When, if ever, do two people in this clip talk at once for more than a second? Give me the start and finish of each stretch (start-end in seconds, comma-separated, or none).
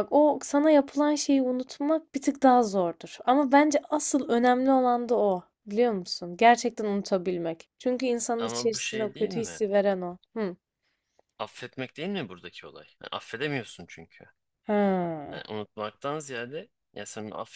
8.4-9.6